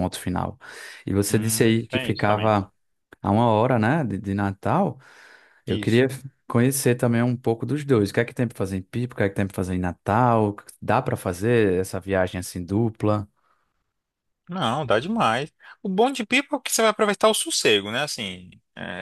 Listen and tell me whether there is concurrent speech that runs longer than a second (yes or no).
yes